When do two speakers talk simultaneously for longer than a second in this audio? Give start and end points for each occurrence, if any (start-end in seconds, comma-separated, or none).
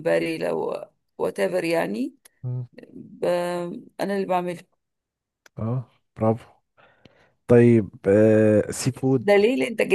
none